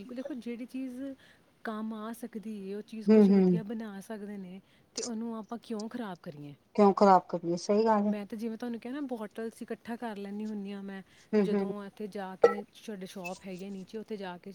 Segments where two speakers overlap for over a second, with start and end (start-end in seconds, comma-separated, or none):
none